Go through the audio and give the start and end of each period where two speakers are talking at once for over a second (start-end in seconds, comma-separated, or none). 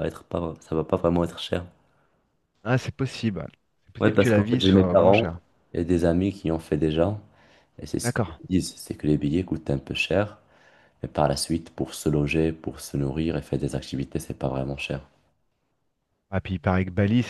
4.0-5.3